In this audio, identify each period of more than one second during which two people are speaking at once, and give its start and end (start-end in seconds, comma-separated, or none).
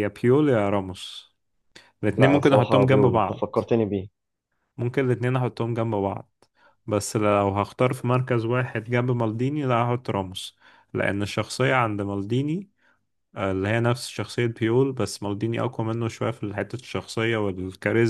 2.2-3.6